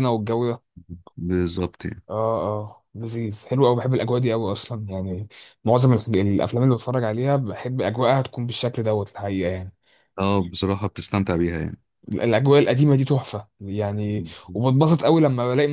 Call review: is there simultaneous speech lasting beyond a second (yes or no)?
no